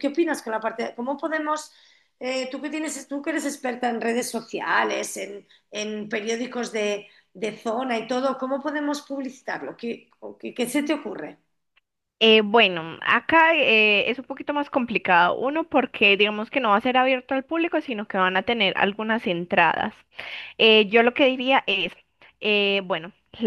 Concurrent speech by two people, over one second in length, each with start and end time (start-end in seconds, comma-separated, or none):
none